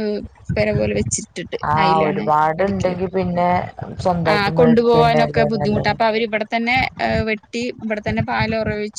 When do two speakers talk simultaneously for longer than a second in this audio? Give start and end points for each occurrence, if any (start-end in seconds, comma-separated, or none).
4.3-5.9